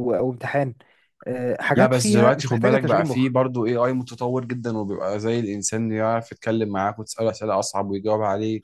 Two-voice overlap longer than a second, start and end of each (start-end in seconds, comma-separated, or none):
1.8-3.3